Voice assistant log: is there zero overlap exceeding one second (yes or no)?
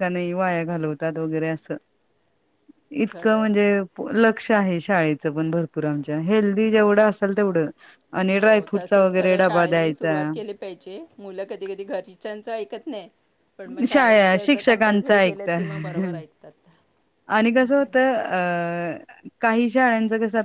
no